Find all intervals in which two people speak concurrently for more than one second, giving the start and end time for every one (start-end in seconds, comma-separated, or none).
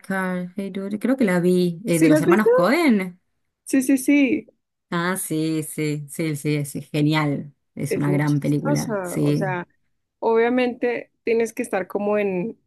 7.9-9.6